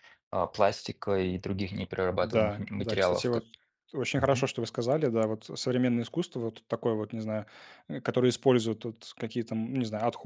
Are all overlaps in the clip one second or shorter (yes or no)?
no